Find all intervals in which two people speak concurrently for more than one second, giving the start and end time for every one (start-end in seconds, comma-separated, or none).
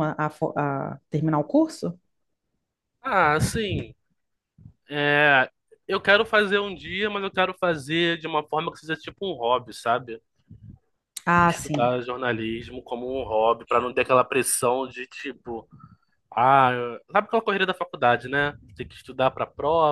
none